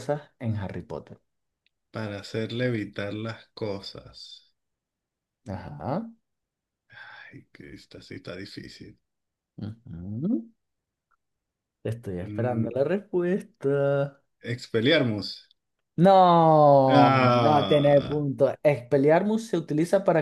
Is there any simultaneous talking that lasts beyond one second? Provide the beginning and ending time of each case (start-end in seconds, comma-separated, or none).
16.9-18.3